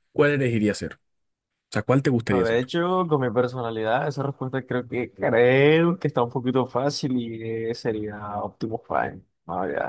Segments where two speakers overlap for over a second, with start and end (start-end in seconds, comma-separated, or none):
none